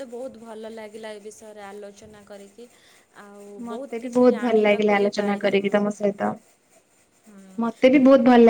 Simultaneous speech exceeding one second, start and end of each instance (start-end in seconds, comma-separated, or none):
4.0-5.8